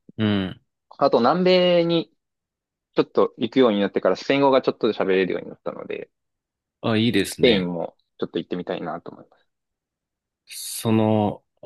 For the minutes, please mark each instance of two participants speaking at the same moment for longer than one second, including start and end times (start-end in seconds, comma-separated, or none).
none